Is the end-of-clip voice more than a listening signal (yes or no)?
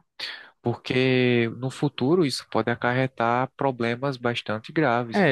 yes